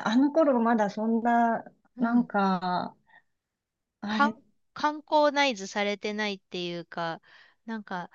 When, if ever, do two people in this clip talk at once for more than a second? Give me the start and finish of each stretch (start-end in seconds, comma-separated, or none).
none